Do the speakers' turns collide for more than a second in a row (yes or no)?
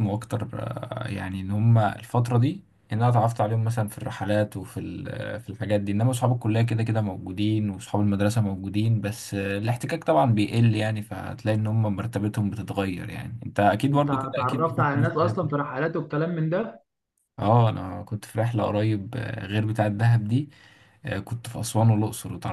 yes